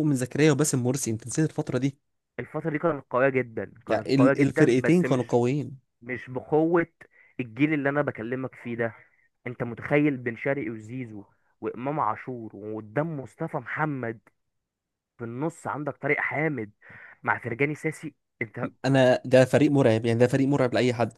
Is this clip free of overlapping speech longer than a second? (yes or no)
no